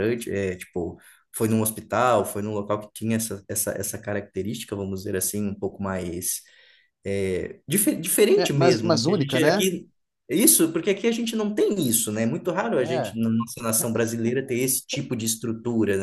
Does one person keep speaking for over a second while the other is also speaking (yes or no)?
yes